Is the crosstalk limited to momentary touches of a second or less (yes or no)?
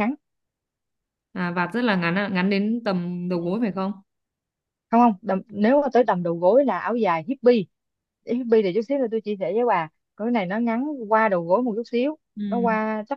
yes